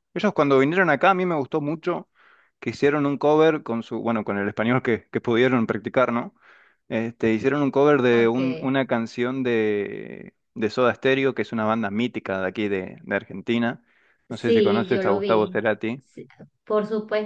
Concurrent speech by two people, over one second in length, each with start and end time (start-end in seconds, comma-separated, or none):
14.3-15.6